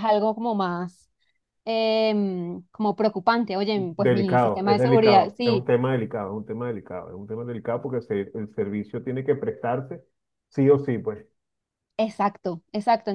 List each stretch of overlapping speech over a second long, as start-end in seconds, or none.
3.8-5.7